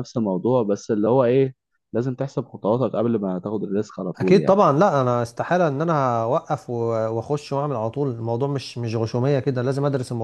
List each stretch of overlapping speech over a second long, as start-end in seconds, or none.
none